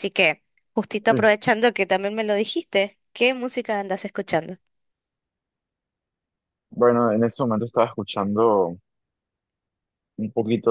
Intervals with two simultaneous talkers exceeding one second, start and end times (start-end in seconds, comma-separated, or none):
none